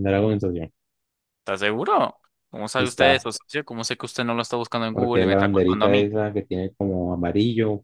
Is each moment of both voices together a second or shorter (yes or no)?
no